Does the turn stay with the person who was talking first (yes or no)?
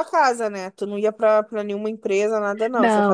no